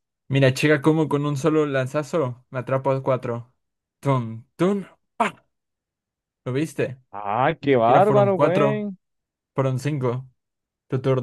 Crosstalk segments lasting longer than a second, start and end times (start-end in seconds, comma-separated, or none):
7.6-8.9